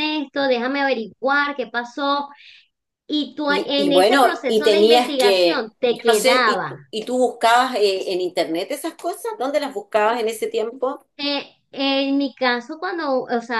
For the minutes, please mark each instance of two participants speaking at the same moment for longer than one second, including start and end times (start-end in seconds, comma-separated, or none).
3.5-6.7